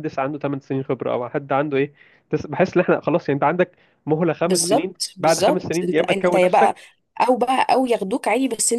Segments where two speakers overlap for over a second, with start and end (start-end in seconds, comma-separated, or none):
4.4-6.7